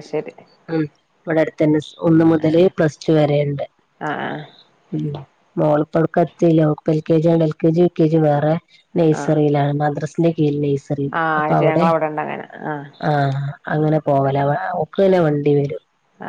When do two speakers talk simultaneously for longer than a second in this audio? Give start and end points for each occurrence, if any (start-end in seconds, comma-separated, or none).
none